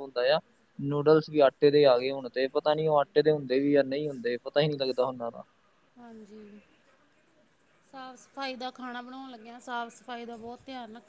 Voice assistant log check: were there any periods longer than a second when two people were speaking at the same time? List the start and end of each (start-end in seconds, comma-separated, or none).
none